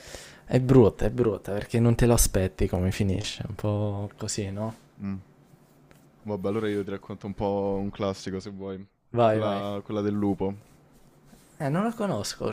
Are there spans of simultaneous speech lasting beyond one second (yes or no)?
no